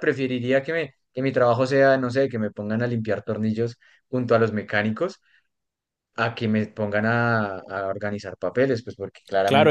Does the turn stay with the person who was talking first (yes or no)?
no